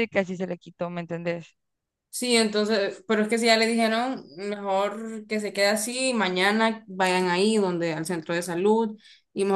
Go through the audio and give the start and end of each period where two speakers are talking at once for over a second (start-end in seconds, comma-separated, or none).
none